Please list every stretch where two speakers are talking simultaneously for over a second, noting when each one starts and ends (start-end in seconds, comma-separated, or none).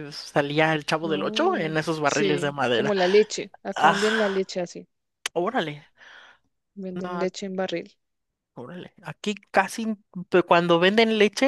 1.1-2.9